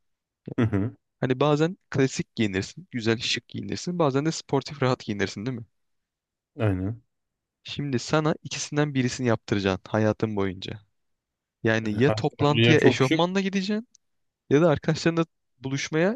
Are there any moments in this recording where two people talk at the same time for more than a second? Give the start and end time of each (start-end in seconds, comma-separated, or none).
11.8-13.2